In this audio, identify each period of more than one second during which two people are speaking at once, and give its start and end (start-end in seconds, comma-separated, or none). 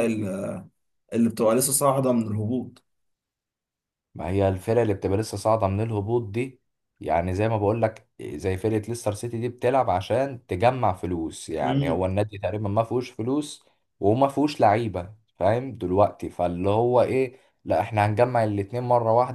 none